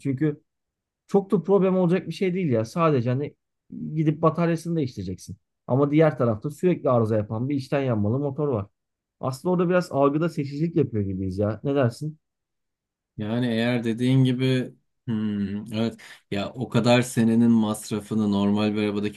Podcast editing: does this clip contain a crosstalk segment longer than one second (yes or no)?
no